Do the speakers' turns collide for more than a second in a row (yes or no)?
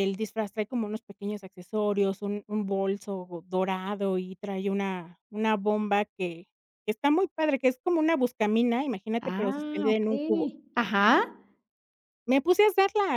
yes